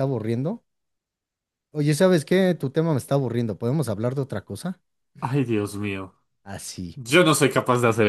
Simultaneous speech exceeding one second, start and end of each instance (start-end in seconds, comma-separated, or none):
none